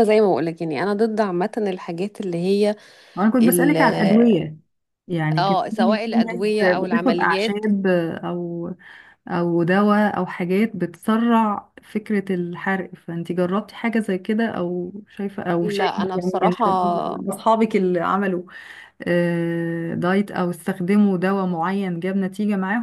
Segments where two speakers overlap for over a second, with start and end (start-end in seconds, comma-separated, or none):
5.4-7.7, 15.6-17.2